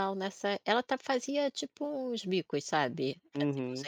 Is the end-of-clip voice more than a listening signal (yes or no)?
no